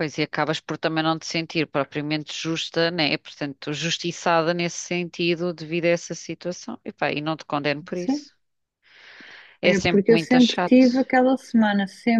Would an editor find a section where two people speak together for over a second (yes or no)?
yes